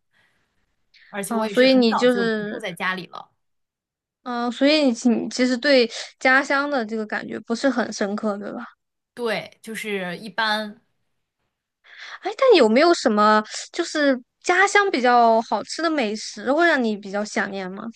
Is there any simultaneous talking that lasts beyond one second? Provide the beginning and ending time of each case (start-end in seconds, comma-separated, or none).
1.3-2.6